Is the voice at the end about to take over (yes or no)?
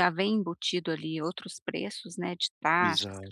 yes